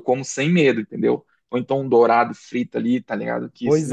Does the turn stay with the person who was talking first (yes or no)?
no